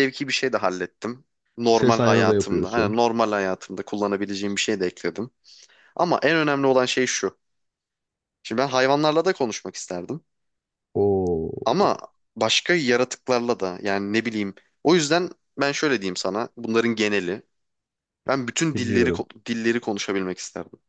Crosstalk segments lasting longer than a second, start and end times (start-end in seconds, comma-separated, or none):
1.7-2.9